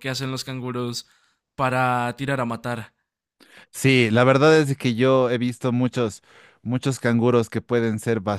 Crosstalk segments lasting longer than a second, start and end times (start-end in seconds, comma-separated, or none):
none